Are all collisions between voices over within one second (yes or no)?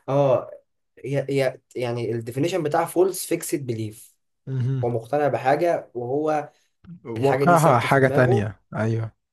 no